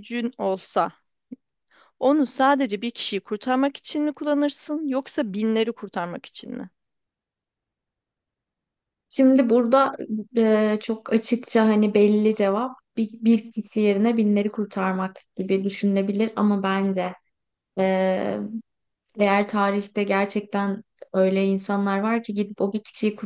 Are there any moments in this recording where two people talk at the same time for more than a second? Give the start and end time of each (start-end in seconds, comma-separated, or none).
none